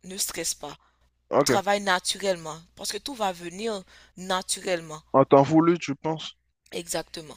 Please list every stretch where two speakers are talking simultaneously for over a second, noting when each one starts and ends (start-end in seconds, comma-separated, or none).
none